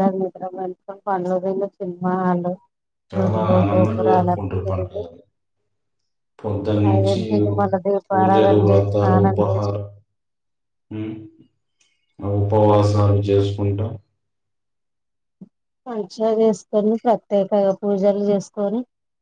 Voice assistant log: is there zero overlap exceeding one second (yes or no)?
no